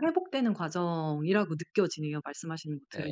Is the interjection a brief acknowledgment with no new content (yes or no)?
no